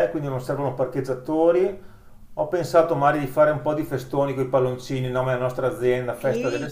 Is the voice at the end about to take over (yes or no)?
yes